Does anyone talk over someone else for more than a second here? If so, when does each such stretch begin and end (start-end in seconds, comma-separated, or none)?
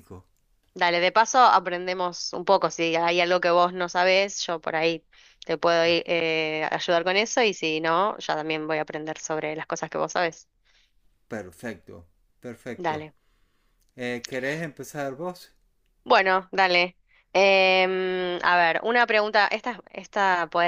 none